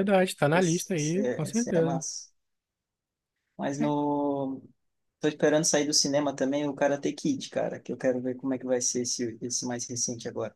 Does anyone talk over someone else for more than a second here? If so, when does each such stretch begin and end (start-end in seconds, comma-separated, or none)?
0.5-2.0